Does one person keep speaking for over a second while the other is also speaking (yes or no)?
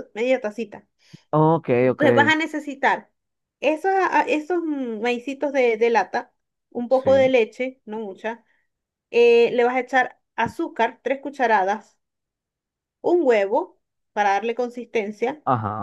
no